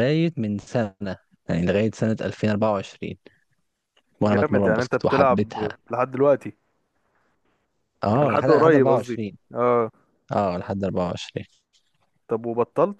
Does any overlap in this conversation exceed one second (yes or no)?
yes